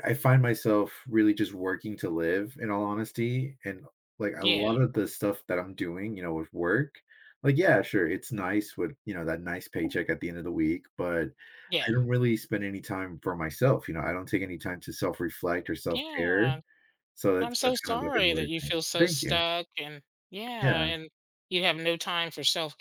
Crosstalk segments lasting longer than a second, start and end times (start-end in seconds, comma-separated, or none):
17.4-19.4